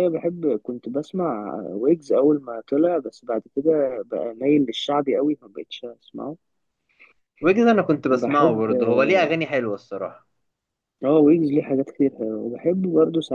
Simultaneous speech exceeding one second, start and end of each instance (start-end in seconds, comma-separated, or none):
none